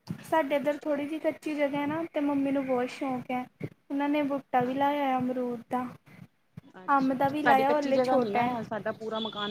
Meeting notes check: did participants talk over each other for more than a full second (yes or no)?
yes